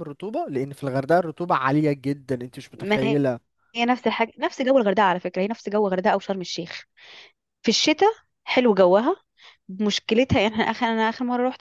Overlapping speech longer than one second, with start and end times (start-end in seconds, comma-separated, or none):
none